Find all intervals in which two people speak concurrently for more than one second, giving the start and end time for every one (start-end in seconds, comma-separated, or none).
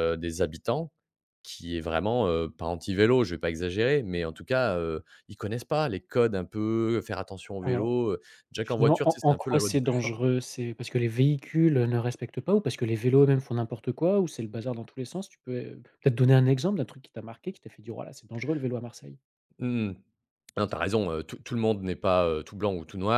8.6-10.2